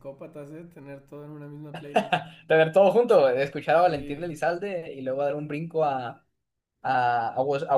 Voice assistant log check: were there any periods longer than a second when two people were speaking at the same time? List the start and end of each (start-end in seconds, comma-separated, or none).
none